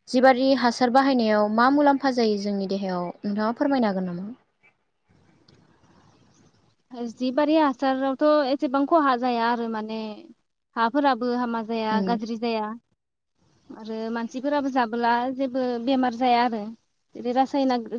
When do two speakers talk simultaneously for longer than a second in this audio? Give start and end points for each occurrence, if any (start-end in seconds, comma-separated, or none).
none